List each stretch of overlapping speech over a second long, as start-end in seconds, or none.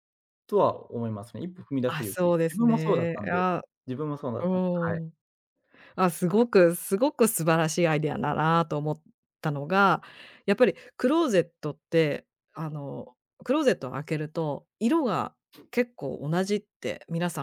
1.9-3.5